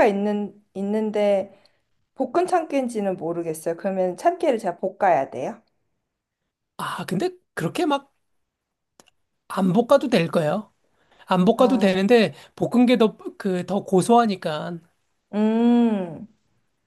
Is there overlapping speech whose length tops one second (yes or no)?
no